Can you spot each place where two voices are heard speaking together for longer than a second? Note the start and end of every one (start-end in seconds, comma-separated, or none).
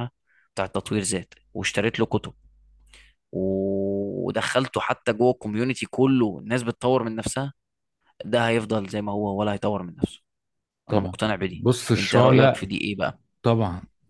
10.9-12.7